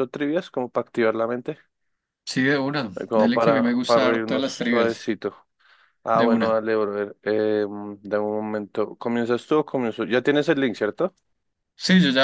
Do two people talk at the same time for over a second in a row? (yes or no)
yes